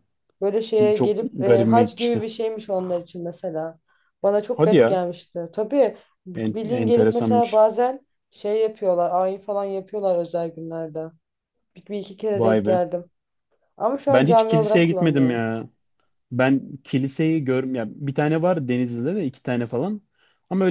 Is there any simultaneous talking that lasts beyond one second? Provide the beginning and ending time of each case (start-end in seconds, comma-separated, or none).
0.9-2.2, 6.3-7.6, 14.1-15.4